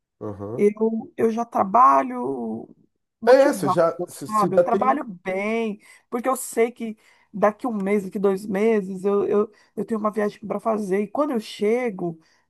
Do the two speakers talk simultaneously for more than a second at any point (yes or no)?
yes